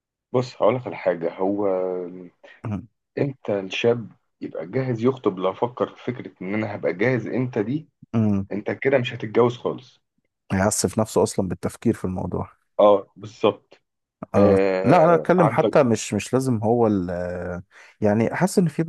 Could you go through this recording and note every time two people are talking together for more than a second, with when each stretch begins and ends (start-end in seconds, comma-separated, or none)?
14.4-15.8